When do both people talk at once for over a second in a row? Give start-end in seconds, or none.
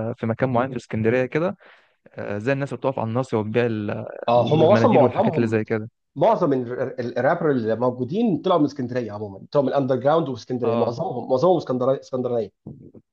4.3-5.6